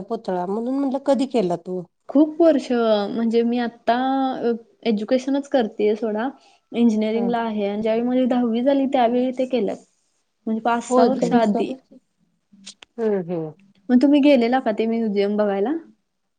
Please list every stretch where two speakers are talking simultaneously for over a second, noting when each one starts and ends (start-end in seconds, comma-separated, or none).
none